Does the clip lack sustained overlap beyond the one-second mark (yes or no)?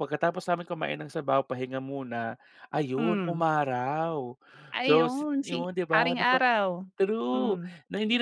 no